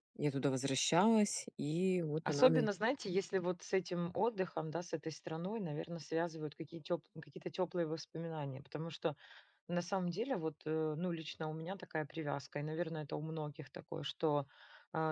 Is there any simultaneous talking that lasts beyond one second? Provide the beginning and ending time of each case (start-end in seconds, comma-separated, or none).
none